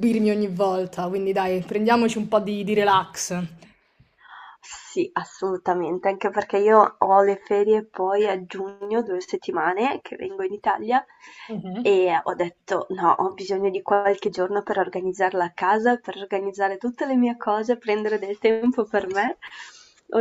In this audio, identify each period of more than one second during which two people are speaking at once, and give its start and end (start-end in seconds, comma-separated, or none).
none